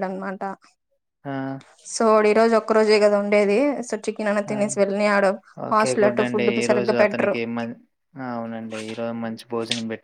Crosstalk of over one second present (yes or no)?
yes